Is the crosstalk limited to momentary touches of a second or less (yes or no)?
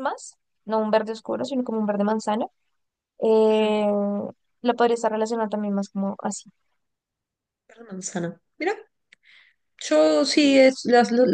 yes